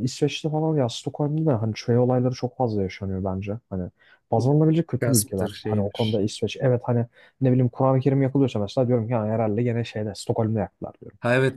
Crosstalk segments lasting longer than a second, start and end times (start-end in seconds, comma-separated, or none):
5.0-6.2